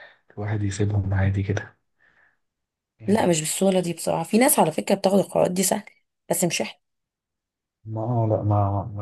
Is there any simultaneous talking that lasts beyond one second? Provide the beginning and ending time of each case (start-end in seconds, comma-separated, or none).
none